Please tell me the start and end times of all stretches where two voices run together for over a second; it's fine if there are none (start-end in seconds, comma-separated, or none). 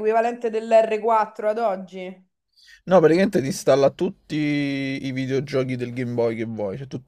none